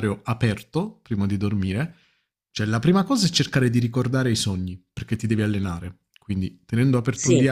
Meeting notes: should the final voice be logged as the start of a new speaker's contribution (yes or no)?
no